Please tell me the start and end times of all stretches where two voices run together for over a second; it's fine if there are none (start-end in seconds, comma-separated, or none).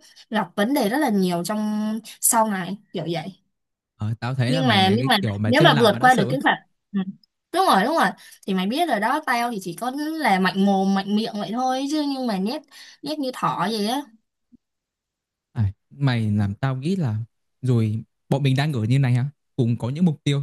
4.5-6.3